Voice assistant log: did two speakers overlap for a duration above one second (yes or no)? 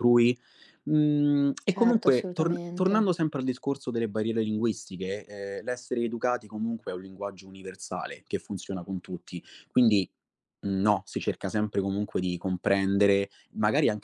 yes